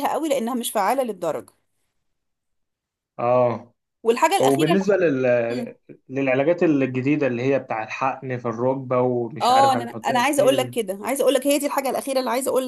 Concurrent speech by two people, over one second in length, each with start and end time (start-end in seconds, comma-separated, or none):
9.4-10.8